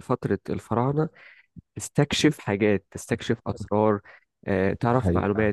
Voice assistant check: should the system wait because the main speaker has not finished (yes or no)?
no